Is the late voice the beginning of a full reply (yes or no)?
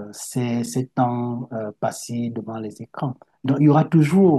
no